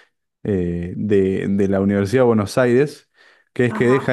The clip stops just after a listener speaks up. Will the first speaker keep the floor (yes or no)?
yes